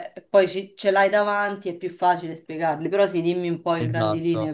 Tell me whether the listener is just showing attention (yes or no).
no